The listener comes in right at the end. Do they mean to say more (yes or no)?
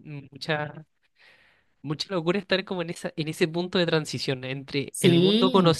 no